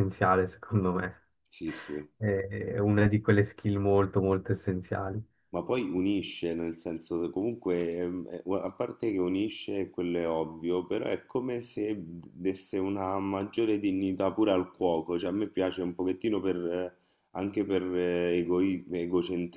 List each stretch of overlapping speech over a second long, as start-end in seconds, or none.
none